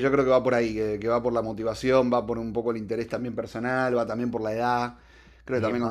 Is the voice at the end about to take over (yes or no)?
no